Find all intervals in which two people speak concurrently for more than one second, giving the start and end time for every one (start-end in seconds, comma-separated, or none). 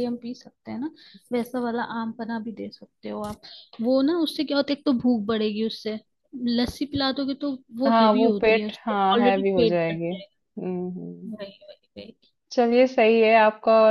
7.9-10.3